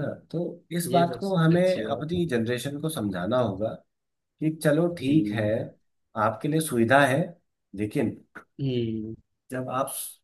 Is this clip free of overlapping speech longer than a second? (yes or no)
no